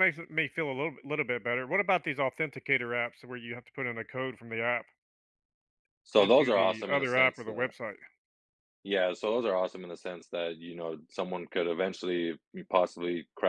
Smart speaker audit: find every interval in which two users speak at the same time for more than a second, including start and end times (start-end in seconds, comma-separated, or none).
6.2-7.7